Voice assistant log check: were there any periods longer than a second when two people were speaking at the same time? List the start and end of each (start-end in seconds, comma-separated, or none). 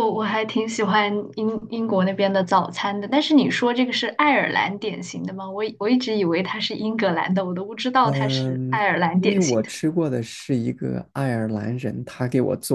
8.0-9.7